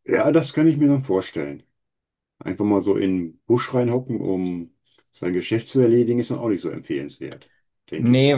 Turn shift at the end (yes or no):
yes